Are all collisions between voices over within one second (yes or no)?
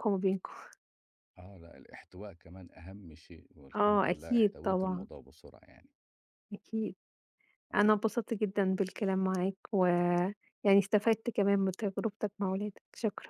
no